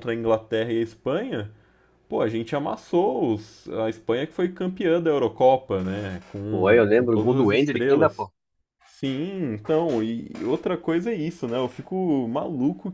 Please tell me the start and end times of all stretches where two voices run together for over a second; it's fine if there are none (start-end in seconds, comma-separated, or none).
6.5-8.2